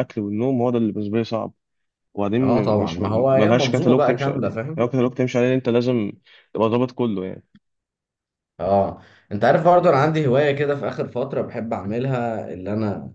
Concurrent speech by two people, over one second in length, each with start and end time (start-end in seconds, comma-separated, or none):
2.4-4.9